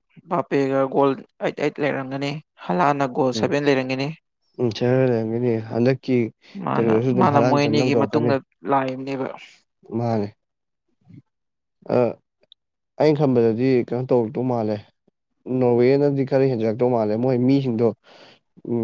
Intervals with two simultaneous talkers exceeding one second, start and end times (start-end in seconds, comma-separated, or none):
6.7-8.3